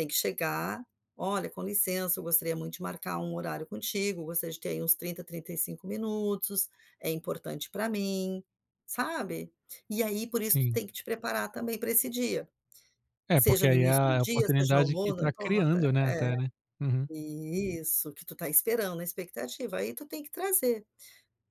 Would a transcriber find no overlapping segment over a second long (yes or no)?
no